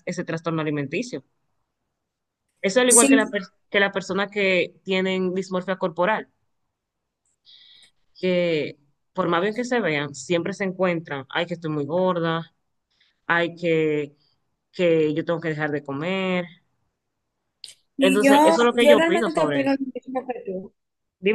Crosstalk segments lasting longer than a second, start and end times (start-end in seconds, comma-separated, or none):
18.0-19.8